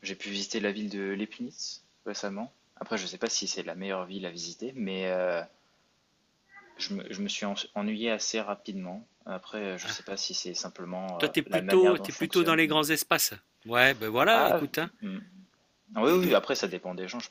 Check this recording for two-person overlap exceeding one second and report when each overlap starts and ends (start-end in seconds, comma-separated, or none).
11.2-12.8